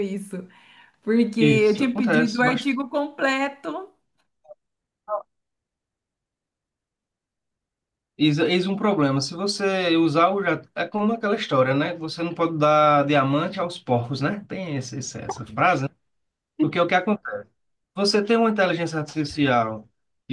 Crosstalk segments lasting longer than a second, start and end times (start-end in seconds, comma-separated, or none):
1.4-2.7